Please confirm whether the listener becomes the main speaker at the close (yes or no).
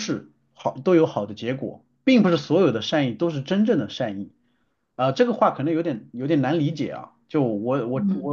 yes